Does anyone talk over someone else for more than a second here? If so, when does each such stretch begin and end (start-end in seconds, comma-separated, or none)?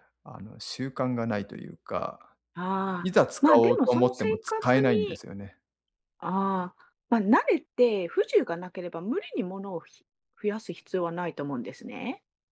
3.0-5.2